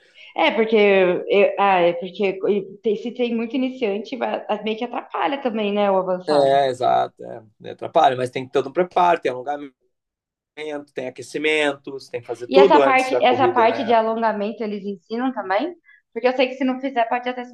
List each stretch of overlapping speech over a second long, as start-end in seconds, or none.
12.5-13.9